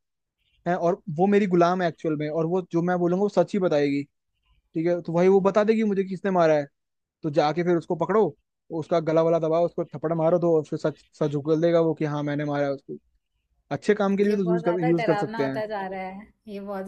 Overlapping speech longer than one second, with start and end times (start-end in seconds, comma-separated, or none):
14.3-15.6